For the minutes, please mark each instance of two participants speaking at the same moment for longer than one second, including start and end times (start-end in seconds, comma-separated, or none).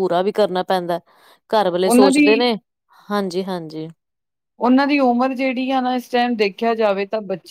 none